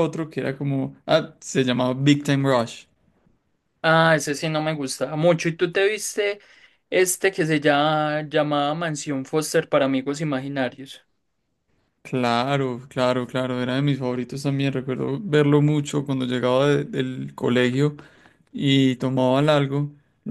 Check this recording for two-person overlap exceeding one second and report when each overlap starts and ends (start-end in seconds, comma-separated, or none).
none